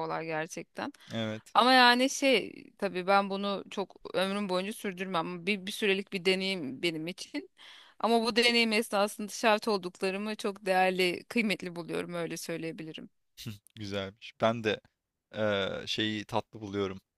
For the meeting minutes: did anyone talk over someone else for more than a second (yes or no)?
no